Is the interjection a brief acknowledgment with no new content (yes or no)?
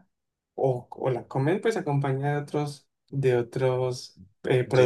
no